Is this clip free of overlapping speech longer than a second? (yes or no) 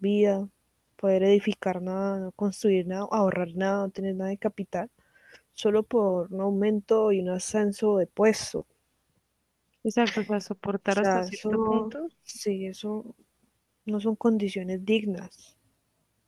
no